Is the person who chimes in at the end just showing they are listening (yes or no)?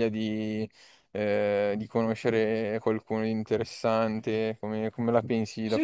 no